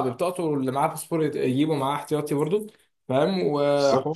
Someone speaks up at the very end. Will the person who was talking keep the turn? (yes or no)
yes